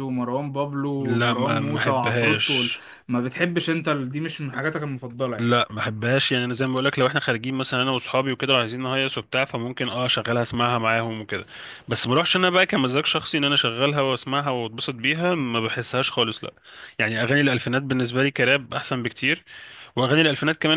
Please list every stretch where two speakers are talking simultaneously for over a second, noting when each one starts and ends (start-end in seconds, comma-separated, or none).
1.0-2.7